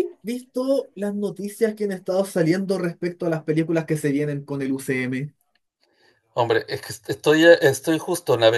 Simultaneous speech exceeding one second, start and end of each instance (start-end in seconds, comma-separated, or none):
none